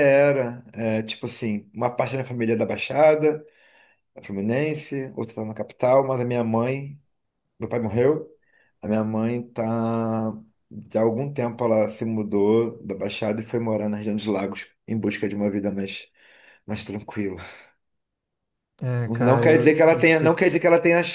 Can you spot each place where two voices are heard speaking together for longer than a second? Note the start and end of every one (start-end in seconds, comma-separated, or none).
19.1-20.4